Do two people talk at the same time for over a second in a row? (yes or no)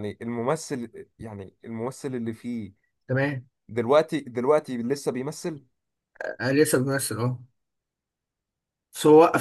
no